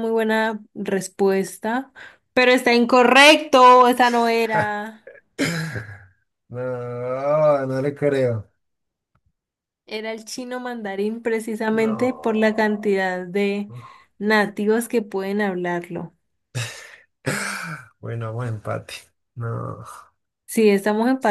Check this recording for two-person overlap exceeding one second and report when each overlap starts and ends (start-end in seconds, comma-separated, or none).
11.7-12.9